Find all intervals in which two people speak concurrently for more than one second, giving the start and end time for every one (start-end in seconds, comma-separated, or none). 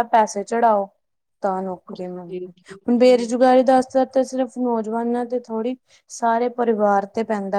1.9-3.5